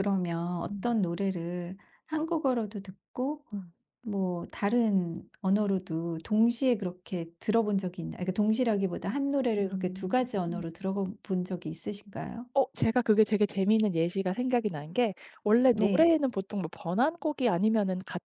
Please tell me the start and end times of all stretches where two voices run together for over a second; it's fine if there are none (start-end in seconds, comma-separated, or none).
none